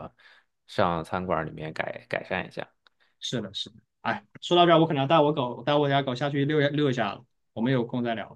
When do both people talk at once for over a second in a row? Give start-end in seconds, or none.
none